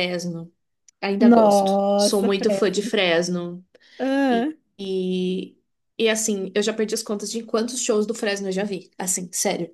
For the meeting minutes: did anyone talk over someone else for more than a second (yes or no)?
yes